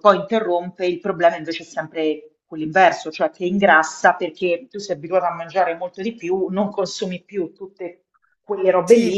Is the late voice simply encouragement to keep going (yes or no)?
no